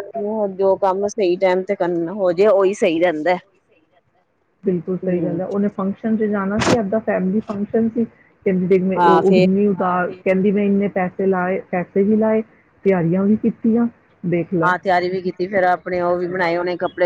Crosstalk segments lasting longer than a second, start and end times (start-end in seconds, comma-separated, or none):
none